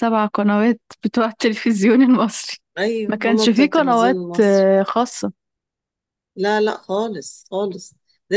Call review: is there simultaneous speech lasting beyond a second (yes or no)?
yes